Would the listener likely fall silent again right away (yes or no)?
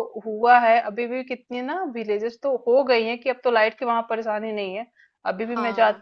yes